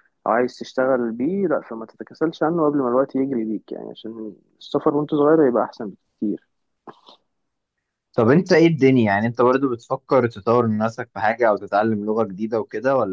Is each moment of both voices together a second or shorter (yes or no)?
yes